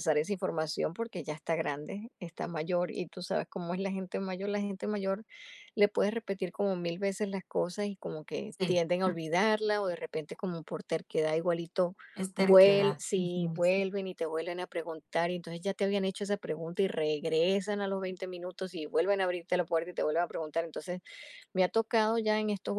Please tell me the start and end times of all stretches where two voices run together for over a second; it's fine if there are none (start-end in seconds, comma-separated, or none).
12.4-13.6